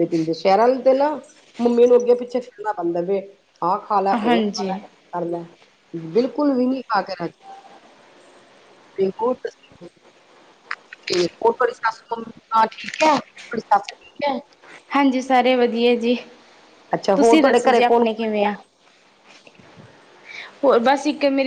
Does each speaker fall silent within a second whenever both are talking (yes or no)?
no